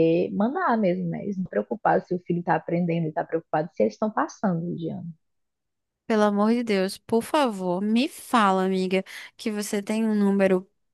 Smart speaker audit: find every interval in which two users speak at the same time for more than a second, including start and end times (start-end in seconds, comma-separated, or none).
none